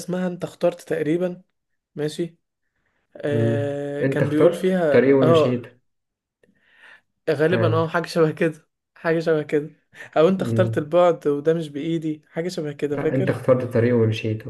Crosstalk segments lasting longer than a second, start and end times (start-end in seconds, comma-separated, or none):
3.3-5.7